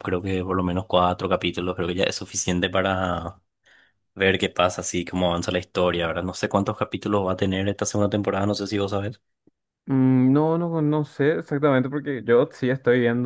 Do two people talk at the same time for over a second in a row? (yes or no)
no